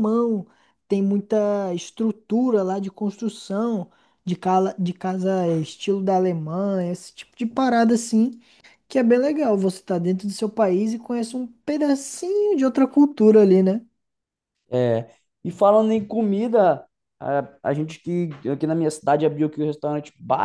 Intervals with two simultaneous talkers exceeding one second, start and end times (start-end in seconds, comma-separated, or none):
none